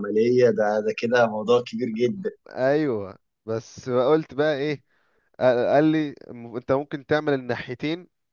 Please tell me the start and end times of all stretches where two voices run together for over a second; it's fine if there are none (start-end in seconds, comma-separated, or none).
none